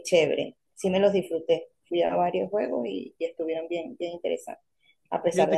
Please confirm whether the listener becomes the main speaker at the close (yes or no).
yes